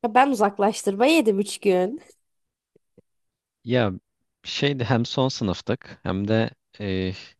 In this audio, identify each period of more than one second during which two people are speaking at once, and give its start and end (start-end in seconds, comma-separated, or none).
none